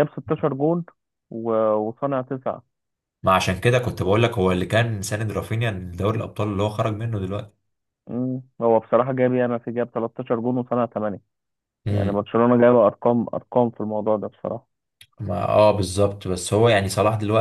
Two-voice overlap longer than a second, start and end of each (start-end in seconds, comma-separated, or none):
none